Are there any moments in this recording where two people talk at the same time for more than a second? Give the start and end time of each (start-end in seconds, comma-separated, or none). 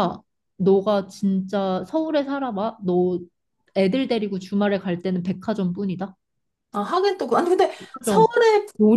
none